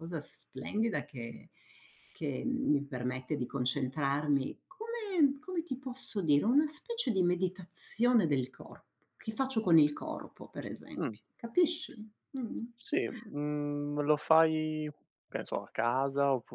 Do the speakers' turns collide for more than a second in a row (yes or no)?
no